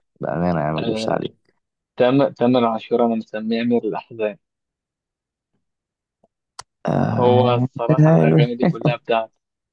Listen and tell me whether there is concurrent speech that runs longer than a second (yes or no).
no